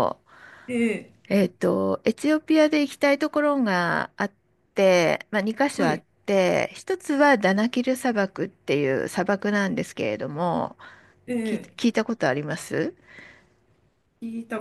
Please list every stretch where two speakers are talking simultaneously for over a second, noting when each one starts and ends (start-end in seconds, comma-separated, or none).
none